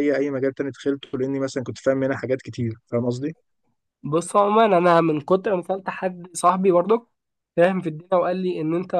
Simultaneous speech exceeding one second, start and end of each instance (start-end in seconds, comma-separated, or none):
none